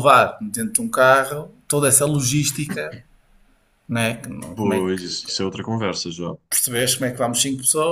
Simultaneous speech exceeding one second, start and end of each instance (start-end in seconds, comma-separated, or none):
none